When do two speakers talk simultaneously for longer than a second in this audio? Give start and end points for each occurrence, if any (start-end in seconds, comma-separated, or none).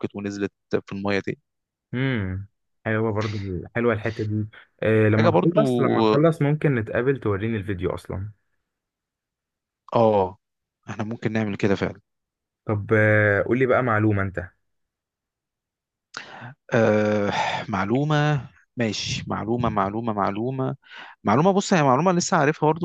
none